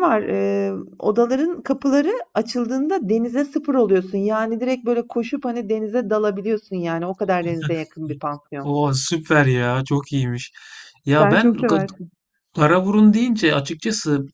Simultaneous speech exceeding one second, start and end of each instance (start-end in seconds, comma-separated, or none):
none